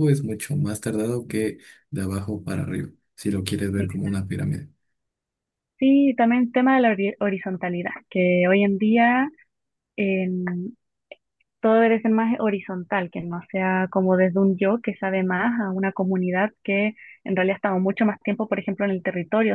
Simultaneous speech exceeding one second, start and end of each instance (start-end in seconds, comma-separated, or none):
none